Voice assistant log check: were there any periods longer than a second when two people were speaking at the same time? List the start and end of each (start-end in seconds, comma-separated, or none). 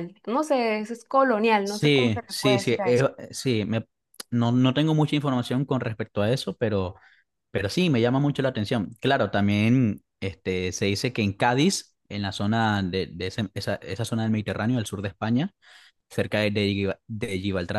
1.6-3.0